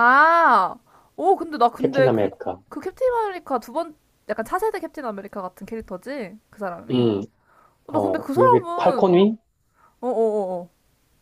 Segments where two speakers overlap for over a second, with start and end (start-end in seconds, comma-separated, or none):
7.9-9.2